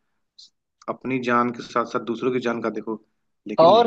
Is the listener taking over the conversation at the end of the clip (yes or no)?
yes